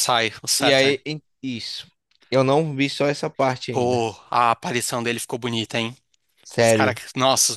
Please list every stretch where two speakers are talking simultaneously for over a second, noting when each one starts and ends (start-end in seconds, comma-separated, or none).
none